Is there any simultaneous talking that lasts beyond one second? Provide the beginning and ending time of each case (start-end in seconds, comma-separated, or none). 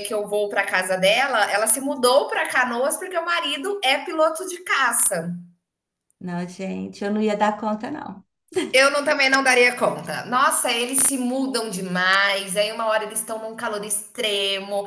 none